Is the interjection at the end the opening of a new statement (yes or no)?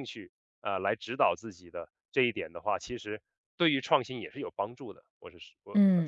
yes